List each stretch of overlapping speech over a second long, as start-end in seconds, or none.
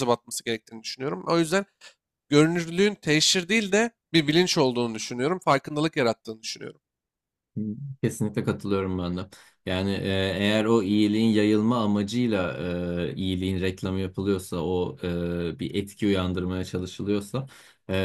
none